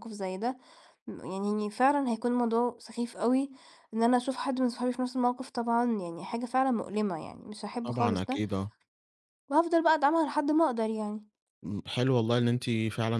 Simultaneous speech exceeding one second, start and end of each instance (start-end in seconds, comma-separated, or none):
none